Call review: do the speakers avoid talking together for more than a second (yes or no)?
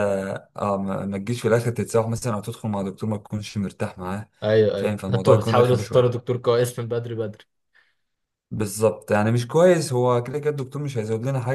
no